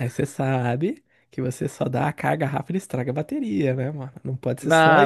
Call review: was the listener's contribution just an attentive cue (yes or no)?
no